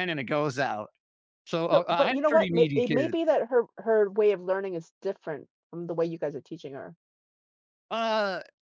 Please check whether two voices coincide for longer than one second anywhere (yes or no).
yes